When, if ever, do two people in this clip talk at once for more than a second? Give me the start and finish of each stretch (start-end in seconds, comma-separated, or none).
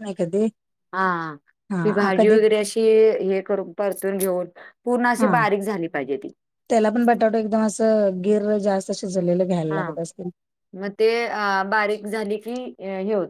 none